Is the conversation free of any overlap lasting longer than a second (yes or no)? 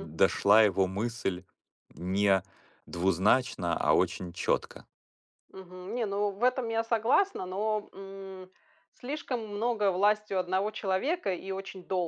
yes